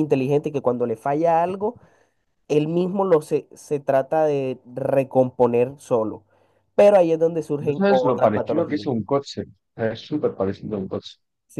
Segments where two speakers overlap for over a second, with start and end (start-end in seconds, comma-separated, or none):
7.6-8.9